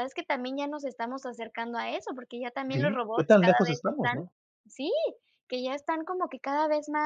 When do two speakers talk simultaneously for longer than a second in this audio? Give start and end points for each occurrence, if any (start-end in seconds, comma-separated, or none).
2.7-4.2